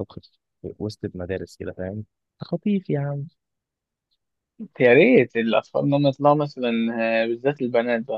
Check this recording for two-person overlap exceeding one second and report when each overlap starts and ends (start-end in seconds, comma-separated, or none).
none